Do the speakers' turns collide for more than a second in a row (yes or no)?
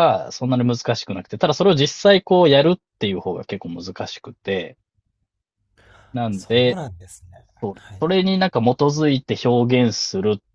no